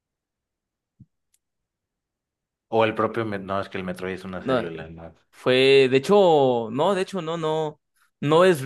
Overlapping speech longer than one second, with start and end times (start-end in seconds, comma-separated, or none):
none